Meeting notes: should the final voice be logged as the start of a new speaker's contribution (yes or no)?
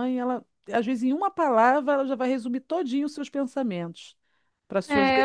yes